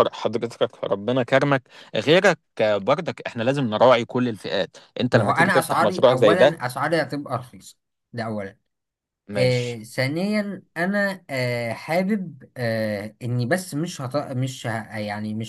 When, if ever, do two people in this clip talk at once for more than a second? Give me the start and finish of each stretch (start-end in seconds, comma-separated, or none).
5.1-6.6